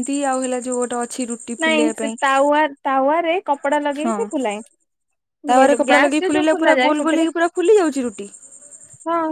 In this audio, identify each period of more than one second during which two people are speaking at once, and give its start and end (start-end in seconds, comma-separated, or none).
5.5-7.3